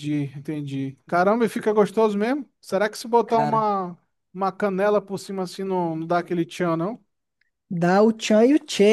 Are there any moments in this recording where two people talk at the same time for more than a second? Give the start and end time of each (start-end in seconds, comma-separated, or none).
none